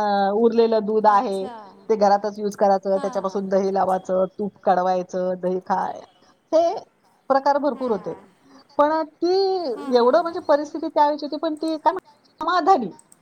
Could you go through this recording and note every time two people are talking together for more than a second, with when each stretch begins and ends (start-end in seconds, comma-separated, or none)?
none